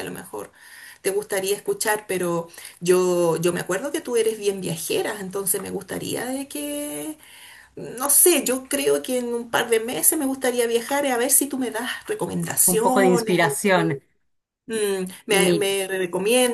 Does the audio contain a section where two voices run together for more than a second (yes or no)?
yes